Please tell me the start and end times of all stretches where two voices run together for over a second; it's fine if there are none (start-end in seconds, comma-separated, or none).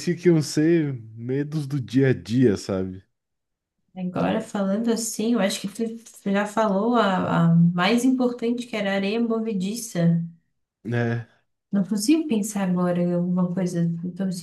none